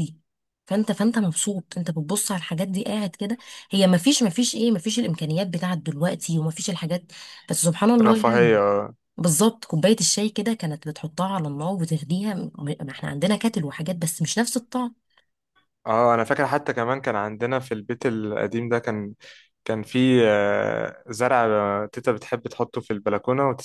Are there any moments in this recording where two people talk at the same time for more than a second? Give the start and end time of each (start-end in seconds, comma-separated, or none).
none